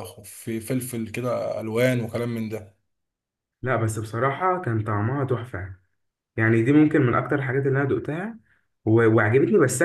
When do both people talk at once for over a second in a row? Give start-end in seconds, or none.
none